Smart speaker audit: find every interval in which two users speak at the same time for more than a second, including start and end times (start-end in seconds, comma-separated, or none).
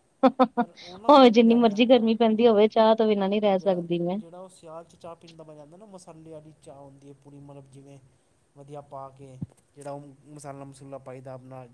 1.1-2.6